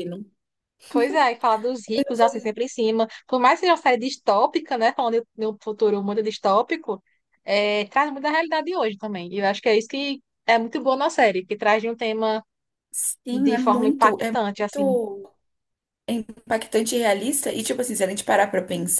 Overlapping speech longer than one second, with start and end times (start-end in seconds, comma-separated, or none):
13.3-15.0